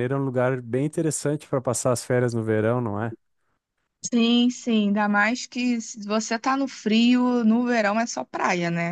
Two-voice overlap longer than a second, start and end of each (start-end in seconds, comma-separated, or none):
none